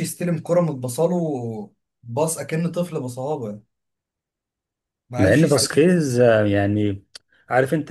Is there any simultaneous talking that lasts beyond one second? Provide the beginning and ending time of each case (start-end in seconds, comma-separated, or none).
none